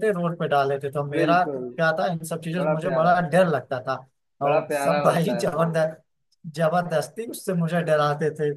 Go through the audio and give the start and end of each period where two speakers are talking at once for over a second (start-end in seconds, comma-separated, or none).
4.5-5.8